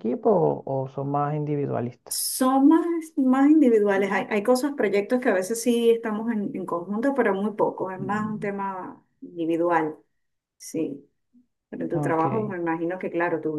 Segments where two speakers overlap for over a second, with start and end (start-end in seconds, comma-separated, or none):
none